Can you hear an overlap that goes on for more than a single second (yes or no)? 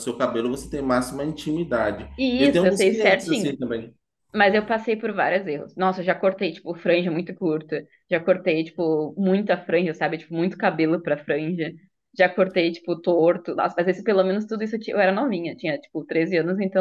yes